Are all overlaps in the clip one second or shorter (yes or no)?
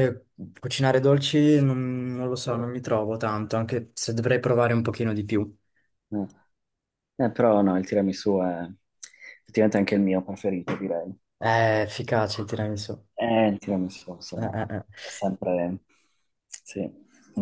yes